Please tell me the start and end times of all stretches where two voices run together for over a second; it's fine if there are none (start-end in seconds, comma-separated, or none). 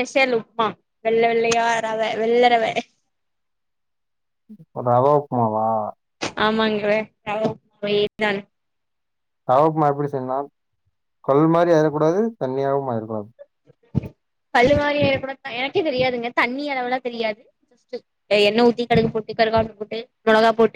none